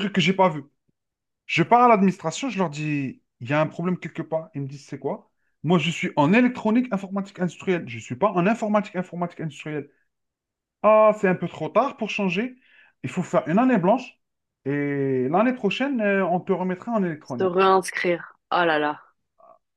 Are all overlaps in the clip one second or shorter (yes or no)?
yes